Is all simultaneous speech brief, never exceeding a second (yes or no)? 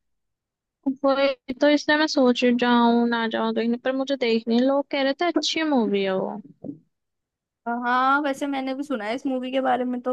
yes